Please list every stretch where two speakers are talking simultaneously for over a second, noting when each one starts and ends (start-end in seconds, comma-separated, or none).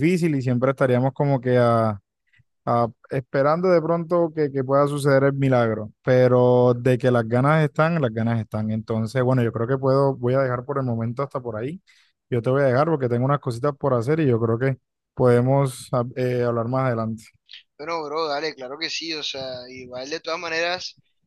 none